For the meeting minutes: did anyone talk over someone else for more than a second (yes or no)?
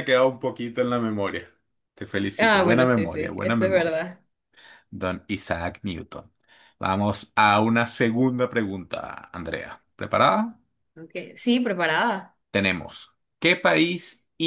yes